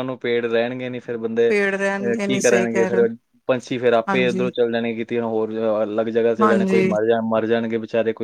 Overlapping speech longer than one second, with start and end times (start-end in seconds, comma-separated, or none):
1.5-3.1